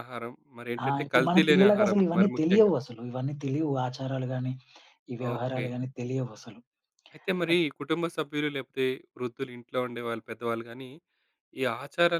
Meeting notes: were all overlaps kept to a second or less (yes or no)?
no